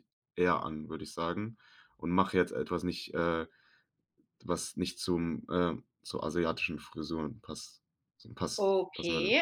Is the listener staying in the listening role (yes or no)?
no